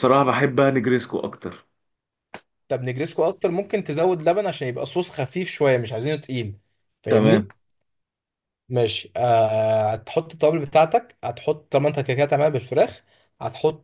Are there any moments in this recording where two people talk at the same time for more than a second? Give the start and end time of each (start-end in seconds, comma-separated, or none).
none